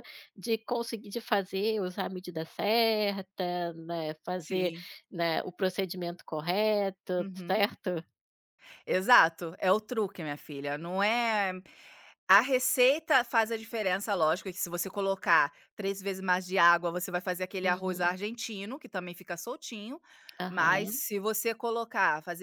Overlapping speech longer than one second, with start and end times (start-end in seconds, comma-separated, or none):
none